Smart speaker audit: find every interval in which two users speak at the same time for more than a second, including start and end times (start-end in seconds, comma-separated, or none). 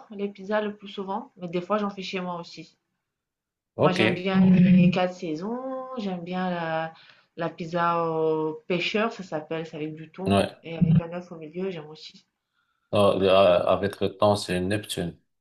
none